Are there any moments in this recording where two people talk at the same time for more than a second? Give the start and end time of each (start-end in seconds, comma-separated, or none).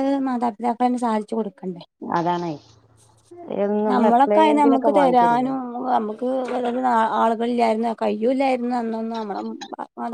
3.9-5.5